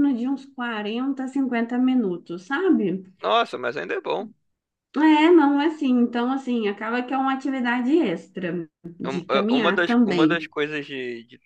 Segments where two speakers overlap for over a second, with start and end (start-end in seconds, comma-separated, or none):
9.1-10.4